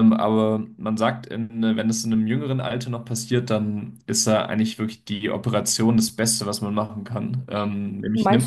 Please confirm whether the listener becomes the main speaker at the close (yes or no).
yes